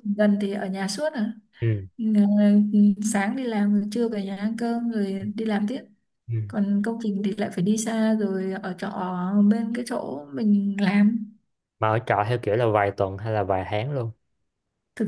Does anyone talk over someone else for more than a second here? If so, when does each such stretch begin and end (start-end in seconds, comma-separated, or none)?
none